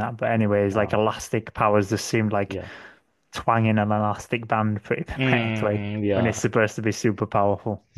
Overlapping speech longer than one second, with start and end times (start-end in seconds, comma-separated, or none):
5.1-6.5